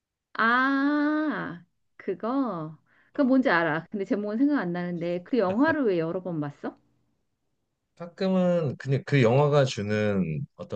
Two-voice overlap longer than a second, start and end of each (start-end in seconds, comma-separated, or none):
none